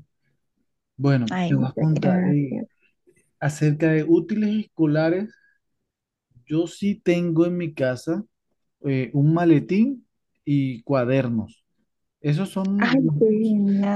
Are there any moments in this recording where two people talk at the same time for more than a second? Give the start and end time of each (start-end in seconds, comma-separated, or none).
1.3-2.6